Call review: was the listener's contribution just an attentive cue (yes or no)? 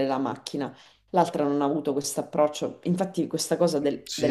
no